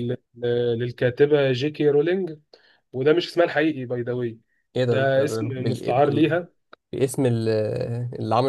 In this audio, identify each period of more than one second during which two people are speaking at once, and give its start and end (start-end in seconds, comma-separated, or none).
4.9-6.3